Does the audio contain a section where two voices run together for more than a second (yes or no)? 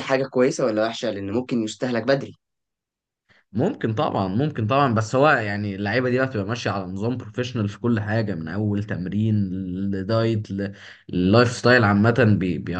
no